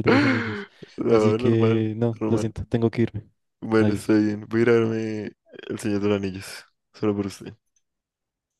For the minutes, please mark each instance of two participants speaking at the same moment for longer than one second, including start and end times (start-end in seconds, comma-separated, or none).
1.1-2.5